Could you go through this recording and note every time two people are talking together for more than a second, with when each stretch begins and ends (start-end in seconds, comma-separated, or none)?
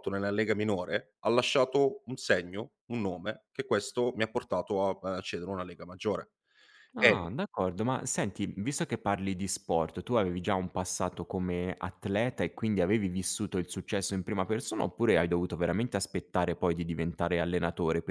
none